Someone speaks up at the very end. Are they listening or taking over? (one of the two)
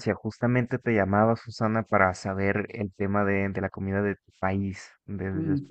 listening